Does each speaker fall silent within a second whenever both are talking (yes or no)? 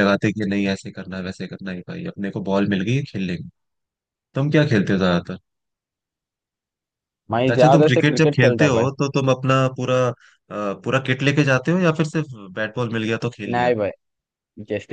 no